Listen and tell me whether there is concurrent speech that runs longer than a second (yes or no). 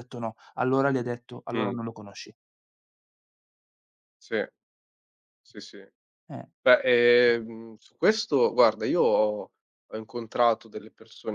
no